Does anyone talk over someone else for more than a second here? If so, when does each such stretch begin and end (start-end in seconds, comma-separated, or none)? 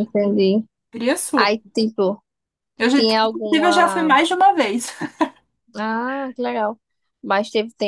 2.9-4.2